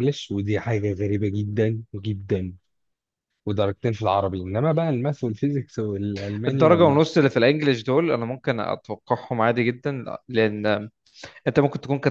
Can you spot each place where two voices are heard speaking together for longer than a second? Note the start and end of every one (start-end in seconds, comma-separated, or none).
none